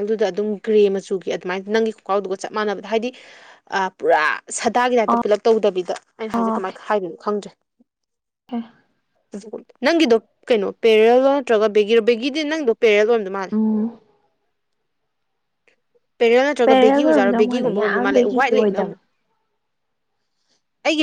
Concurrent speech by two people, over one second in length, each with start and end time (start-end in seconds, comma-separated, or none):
16.6-19.0